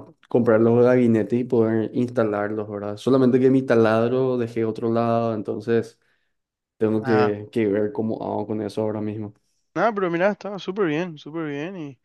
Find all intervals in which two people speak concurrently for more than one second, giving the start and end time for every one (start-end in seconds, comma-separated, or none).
none